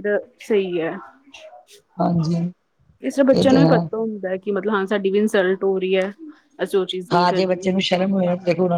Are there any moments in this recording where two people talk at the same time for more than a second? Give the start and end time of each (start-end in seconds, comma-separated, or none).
none